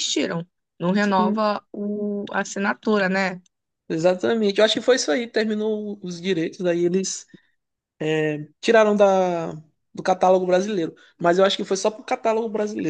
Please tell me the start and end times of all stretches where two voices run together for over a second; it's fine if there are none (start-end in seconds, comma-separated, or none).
none